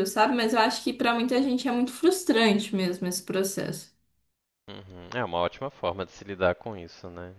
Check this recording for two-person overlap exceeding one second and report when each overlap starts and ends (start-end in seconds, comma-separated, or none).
none